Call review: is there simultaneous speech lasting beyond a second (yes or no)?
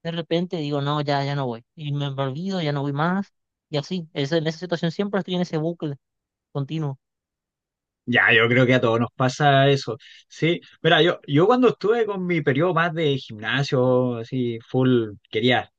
no